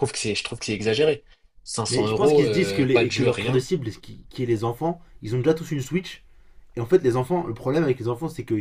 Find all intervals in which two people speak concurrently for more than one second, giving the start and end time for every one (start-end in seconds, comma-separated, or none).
1.9-3.6